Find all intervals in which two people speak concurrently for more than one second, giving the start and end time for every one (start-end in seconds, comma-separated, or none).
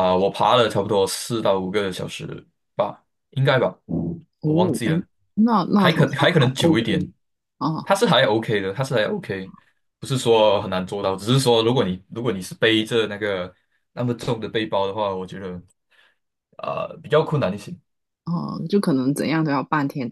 5.8-7.1